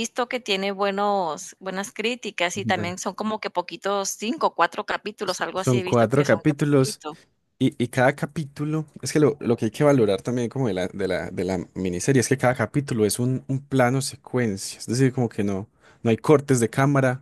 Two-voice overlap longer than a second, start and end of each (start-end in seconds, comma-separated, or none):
5.2-7.0